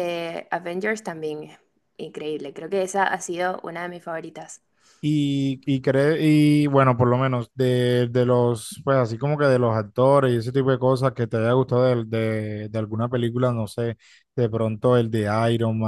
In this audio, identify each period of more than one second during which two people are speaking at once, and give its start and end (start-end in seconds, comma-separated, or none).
none